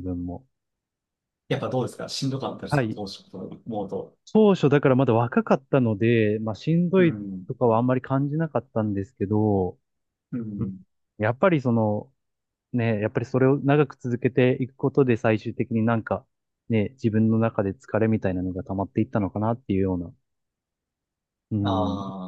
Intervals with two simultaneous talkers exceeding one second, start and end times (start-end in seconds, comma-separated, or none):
none